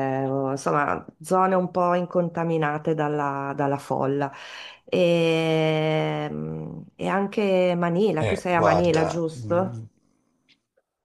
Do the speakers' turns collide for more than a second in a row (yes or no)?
yes